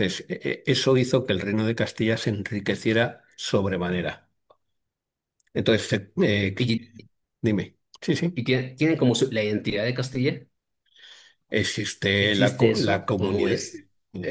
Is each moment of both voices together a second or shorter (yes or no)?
no